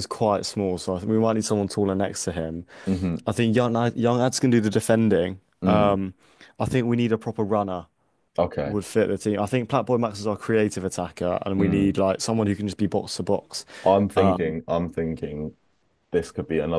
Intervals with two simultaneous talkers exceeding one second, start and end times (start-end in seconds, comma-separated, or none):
none